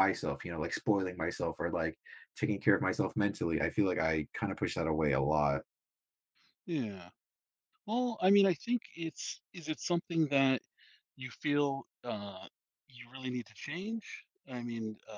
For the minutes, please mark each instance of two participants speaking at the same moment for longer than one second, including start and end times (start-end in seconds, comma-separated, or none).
none